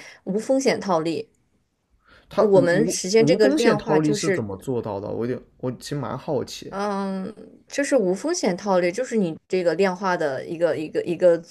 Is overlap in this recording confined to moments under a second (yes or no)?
no